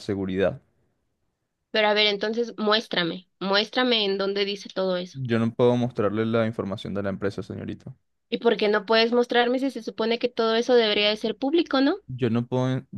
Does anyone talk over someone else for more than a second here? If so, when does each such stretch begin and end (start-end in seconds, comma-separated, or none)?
none